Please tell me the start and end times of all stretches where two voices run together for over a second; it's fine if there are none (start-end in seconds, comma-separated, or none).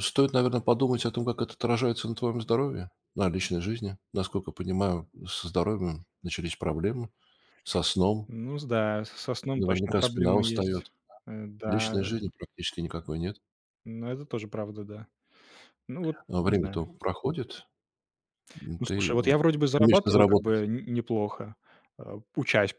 9.6-10.9, 18.8-20.6